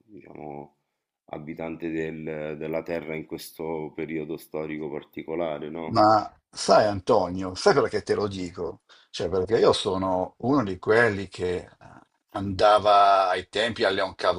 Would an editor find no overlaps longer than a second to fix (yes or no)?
yes